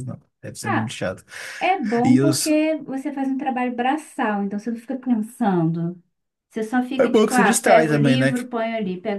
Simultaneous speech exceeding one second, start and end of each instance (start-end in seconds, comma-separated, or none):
7.0-8.4